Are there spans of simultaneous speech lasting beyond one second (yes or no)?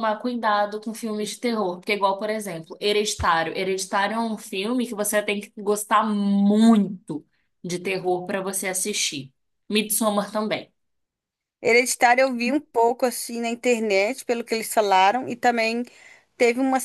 no